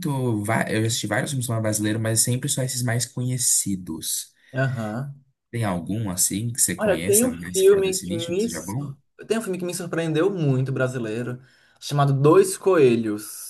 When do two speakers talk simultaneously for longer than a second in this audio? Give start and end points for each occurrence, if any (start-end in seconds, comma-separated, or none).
6.8-8.9